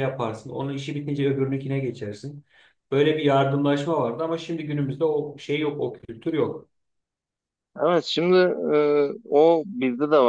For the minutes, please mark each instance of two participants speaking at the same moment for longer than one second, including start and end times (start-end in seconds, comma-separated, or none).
none